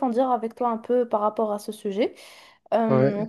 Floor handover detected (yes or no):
no